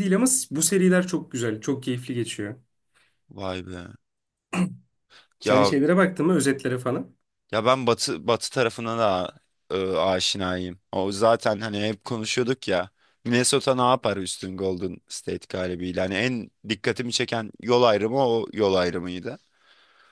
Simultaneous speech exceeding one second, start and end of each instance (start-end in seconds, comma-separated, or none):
none